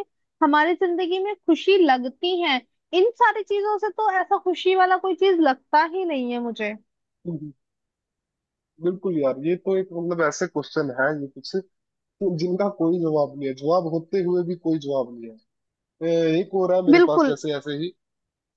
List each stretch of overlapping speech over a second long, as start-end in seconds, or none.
none